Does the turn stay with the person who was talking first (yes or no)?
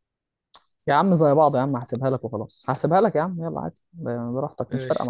no